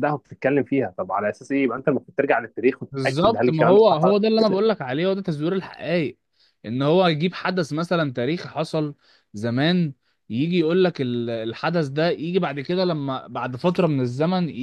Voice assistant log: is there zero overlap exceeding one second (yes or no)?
no